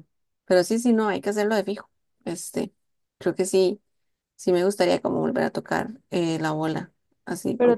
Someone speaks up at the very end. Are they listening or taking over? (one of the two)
taking over